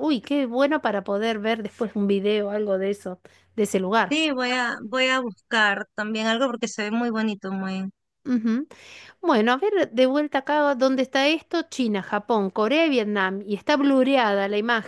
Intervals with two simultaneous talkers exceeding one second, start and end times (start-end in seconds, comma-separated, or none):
none